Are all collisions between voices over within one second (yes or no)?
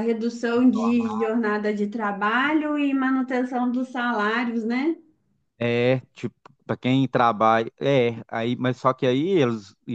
yes